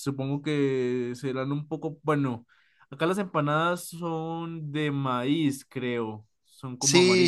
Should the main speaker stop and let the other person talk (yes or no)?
yes